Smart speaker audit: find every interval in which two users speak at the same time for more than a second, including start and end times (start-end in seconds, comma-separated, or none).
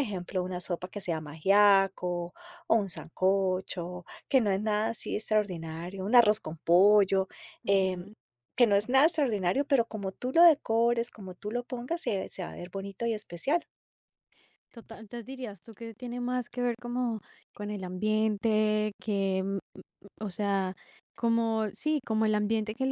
none